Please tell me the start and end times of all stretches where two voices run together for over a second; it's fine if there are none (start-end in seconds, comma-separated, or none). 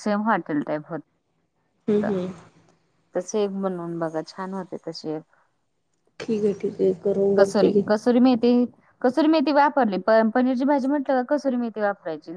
none